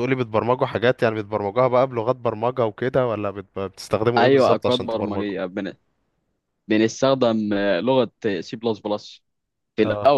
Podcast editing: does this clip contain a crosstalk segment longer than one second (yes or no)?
yes